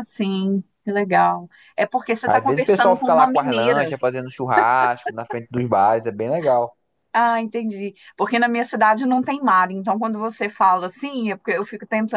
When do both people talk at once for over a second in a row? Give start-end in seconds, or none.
2.2-3.9